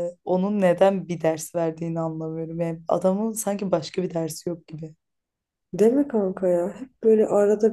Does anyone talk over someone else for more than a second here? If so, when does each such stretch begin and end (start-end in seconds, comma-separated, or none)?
none